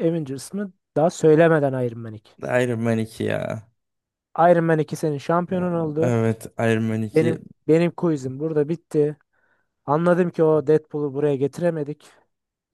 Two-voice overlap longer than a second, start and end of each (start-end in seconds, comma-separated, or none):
none